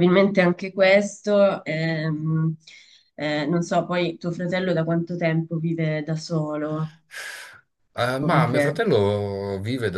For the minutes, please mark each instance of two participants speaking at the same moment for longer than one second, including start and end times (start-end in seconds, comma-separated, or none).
none